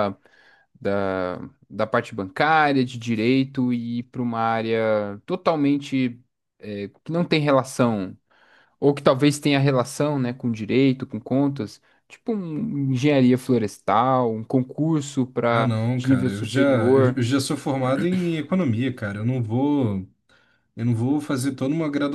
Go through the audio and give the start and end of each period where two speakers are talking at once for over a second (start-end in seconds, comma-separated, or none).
15.5-17.2